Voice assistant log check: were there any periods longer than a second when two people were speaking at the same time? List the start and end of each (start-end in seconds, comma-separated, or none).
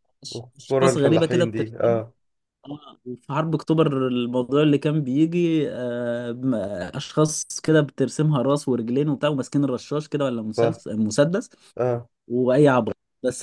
0.6-2.0